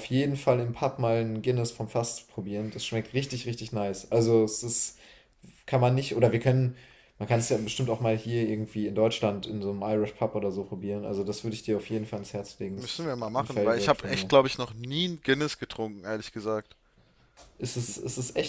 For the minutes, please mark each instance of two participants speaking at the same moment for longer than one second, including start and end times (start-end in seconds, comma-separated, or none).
12.8-14.3